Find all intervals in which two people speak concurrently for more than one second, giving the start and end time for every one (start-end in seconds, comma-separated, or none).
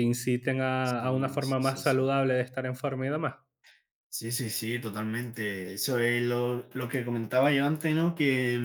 0.8-2.1